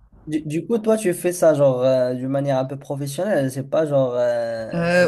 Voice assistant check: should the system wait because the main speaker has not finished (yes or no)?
no